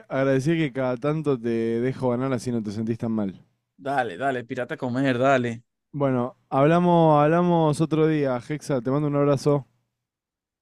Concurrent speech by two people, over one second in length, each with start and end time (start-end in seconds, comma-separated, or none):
none